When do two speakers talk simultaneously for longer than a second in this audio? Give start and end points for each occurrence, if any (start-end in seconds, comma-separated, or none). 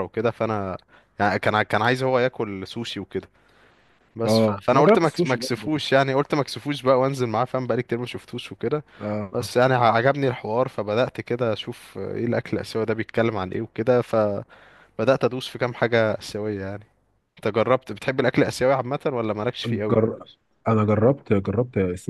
4.2-5.7